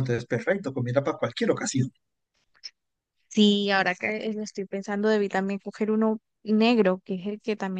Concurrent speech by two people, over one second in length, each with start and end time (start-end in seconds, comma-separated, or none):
none